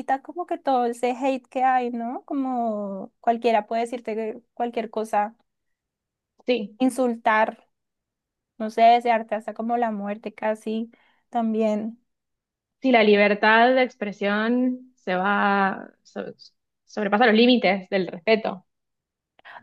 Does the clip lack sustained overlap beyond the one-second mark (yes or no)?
yes